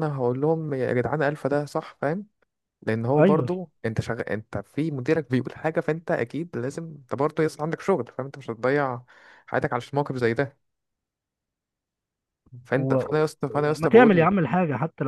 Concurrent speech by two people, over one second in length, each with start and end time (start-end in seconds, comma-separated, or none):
none